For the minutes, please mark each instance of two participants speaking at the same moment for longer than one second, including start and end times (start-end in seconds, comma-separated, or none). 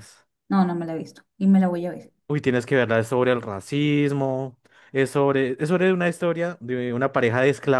none